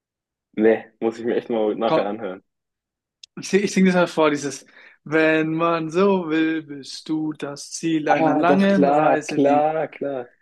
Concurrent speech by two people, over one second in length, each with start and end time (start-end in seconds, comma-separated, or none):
8.1-9.7